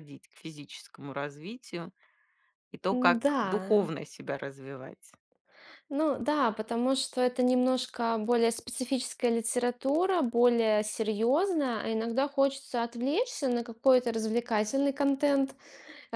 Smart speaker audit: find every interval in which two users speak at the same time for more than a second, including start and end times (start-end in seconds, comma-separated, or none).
none